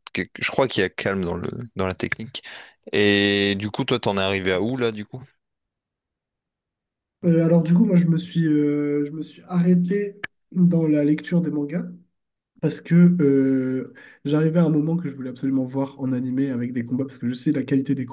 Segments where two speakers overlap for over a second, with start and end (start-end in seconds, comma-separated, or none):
none